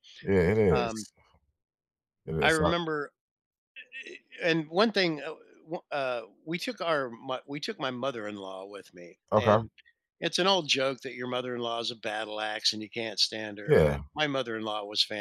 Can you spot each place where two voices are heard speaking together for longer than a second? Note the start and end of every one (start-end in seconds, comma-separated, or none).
none